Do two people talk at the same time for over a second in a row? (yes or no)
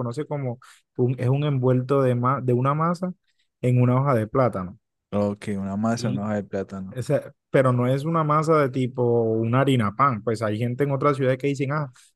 no